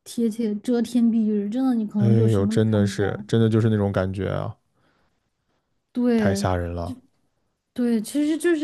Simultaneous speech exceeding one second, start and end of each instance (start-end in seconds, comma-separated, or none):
2.0-3.2